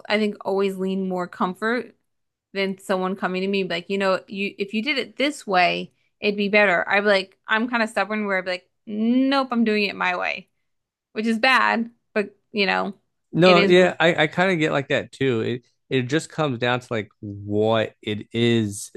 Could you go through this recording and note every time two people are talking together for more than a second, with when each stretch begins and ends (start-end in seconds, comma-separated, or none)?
none